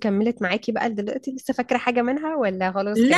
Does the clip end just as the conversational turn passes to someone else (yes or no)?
yes